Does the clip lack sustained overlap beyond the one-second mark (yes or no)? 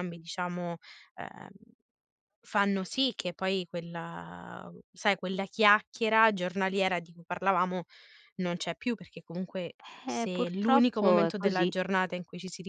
no